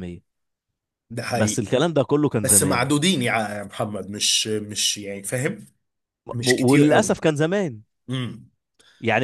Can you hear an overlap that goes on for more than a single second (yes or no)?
no